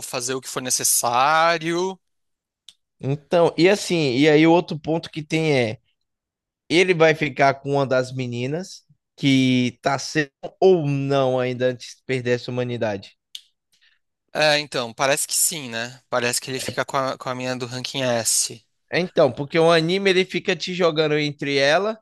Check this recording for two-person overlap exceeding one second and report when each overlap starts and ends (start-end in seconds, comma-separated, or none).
none